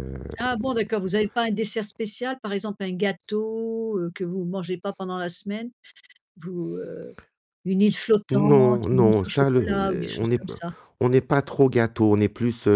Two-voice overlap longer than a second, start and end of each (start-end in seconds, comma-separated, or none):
8.3-10.6